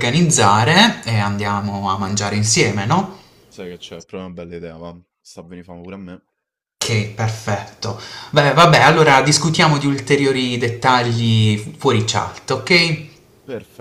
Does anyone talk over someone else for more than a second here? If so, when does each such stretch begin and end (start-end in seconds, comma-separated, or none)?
none